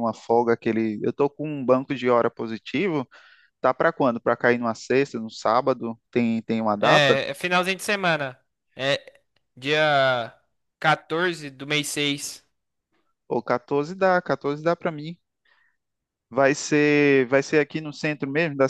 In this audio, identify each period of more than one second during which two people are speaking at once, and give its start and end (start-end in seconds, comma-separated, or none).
none